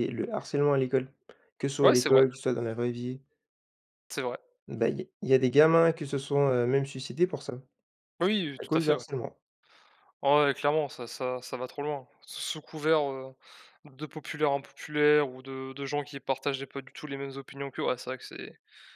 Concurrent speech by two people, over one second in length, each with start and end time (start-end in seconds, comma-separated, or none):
none